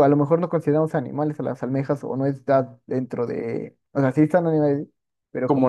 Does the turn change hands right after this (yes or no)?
yes